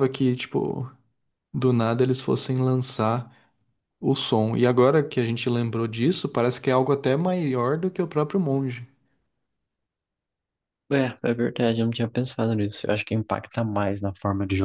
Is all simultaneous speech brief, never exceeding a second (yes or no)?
yes